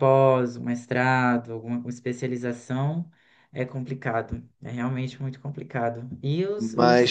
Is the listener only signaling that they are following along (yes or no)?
yes